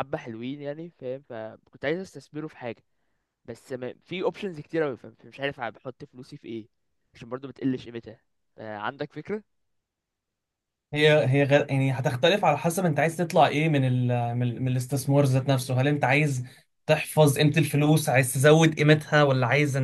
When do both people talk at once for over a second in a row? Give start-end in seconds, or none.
none